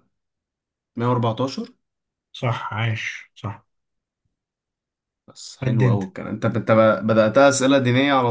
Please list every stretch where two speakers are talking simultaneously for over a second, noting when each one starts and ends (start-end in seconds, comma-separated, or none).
none